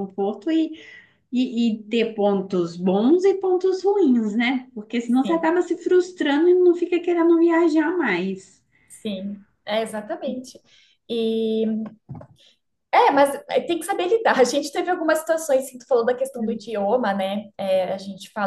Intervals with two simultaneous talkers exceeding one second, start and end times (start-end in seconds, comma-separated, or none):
none